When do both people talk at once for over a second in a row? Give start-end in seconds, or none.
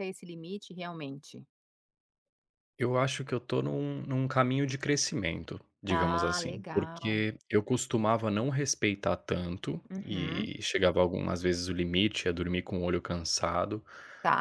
5.9-7.3